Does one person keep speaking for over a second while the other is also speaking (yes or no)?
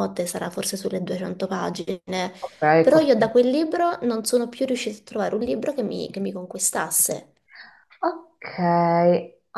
no